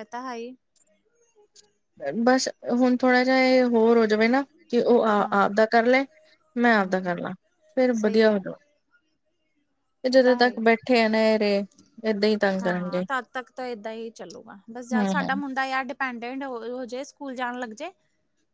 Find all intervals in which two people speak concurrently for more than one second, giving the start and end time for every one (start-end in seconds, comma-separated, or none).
none